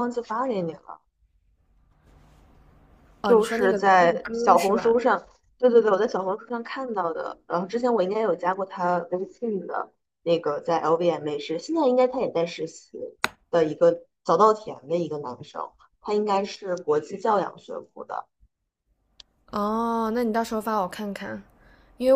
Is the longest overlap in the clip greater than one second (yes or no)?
yes